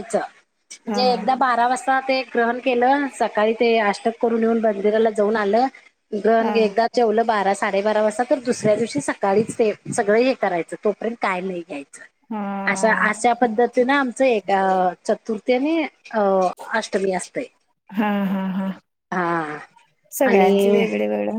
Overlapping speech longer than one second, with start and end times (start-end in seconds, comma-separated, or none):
none